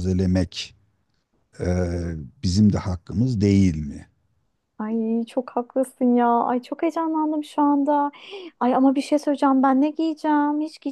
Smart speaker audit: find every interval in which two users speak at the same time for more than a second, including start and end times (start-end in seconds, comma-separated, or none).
none